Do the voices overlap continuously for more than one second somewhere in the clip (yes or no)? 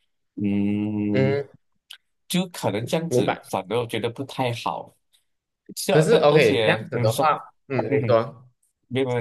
yes